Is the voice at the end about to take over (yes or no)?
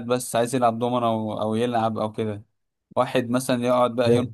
no